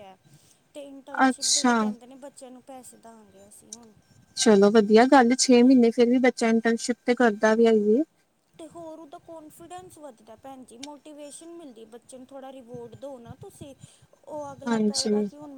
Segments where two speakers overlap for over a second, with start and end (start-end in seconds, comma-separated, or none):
none